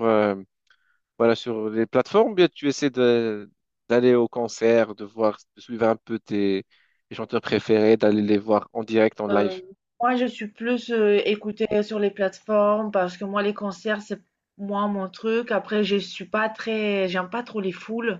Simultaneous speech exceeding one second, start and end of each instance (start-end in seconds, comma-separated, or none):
none